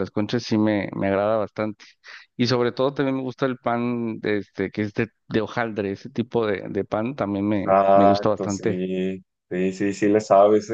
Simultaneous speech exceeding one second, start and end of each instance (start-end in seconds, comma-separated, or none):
7.6-8.8